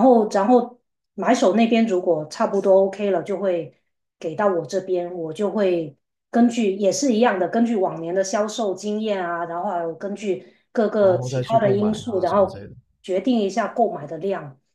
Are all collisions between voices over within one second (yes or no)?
no